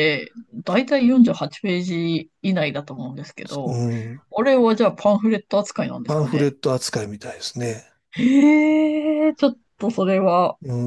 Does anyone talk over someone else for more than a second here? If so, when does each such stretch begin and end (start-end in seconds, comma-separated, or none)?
none